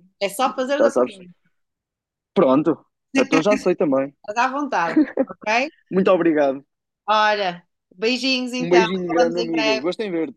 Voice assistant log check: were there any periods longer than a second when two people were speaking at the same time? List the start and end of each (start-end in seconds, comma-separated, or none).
8.6-9.9